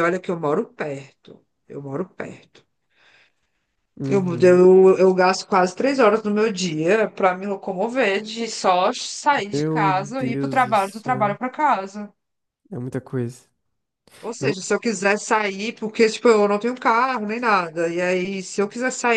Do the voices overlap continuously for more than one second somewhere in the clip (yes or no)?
yes